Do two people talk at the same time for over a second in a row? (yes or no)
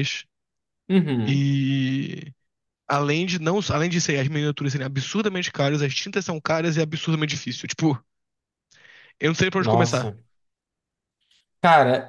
no